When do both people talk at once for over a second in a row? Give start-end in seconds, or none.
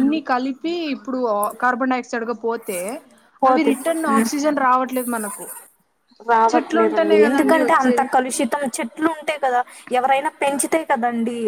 6.5-8.1